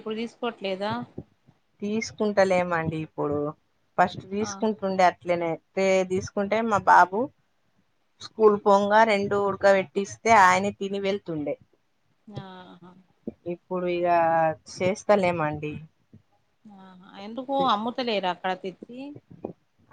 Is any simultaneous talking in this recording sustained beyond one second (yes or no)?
no